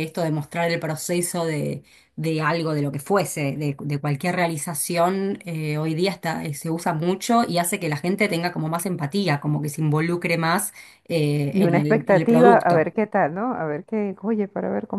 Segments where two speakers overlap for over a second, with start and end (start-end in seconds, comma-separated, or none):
11.5-12.9